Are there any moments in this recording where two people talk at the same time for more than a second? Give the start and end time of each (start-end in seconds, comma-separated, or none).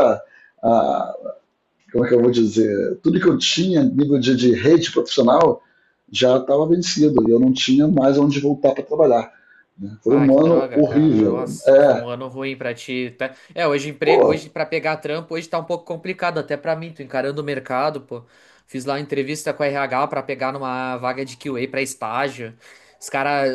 10.1-12.1